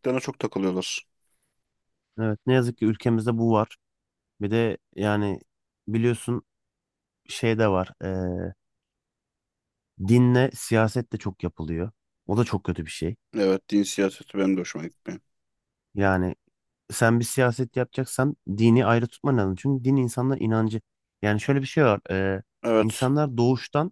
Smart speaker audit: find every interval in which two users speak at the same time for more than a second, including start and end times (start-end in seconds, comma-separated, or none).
none